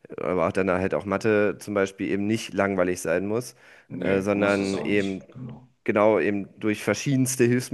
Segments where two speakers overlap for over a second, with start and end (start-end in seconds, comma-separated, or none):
4.0-5.2